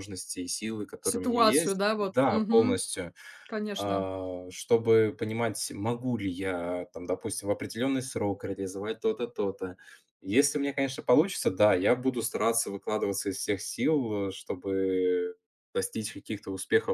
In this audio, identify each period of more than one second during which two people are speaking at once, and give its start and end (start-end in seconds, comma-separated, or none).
1.0-2.8